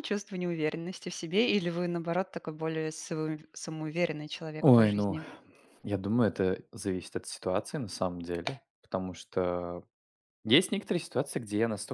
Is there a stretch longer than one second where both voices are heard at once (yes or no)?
no